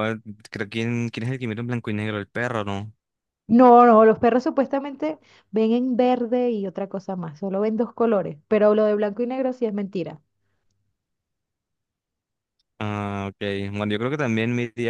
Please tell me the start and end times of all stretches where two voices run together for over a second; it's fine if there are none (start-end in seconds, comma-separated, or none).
none